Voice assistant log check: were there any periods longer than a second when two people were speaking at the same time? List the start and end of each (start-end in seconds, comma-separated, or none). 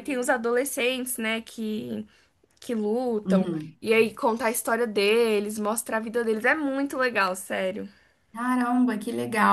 none